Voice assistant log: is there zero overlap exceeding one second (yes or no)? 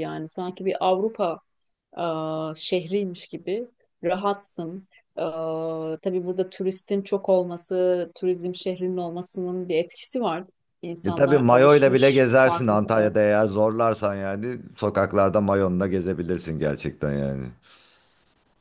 no